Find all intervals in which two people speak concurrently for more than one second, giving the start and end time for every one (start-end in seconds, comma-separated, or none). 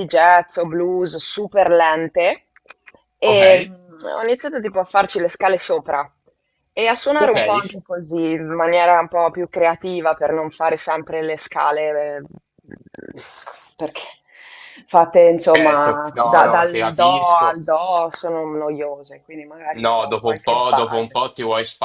15.5-17.6, 19.8-21.2